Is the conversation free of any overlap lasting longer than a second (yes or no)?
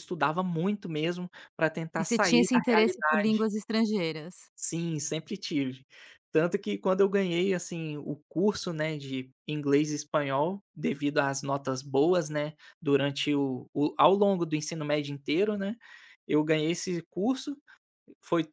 no